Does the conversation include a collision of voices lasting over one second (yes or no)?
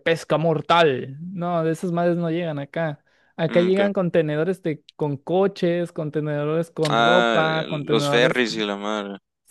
yes